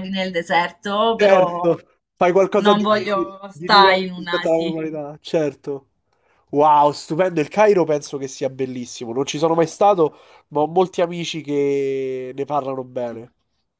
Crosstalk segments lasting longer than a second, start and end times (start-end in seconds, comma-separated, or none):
3.5-4.8